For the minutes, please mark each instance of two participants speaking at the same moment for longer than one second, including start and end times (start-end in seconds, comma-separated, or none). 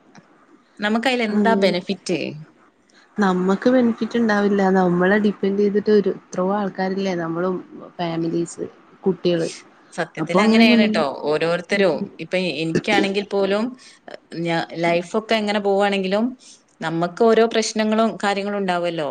none